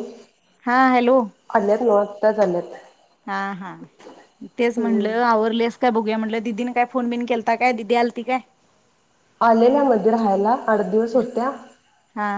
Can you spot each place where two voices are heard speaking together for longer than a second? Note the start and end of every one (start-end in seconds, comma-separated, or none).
none